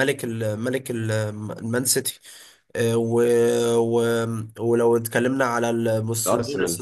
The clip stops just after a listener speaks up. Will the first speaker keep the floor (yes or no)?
yes